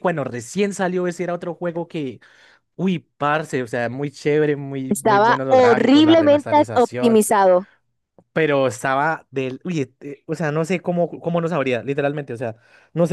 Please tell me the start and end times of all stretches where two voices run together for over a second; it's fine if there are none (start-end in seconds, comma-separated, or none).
4.9-7.2